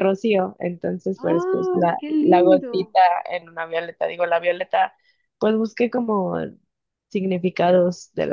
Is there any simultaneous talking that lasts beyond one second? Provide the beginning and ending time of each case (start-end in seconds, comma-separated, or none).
1.2-3.0